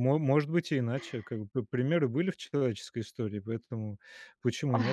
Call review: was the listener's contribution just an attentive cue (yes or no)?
yes